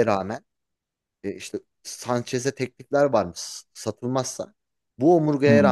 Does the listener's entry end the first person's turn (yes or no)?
no